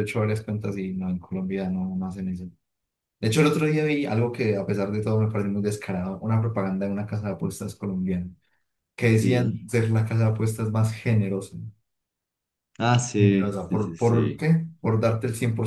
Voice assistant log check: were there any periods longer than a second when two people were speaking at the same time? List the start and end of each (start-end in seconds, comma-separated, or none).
13.2-14.4